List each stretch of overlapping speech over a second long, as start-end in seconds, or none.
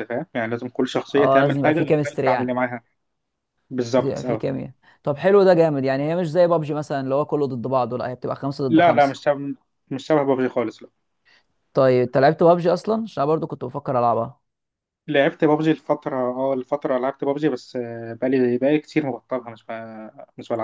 1.1-2.6